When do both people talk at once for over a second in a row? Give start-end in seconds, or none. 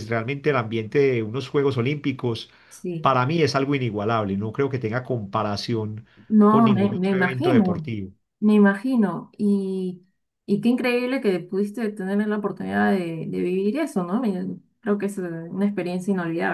6.5-7.9